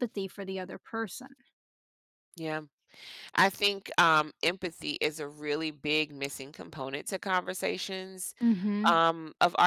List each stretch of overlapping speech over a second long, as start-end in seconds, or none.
none